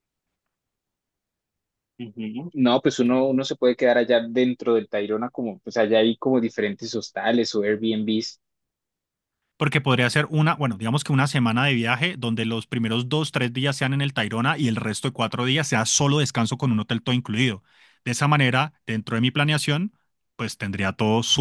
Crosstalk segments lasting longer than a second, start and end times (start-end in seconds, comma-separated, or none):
none